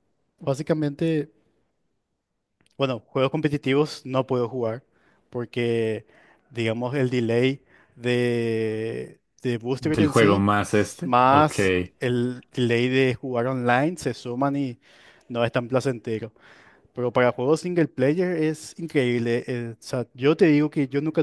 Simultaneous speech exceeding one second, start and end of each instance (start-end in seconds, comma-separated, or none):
9.9-11.6